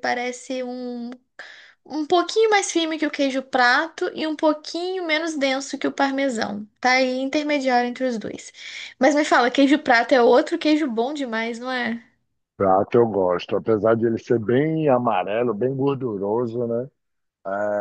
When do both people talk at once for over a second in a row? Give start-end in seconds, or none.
none